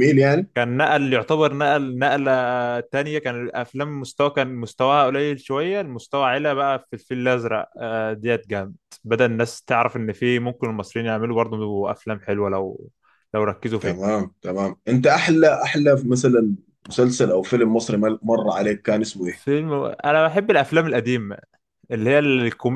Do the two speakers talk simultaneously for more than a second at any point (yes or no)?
no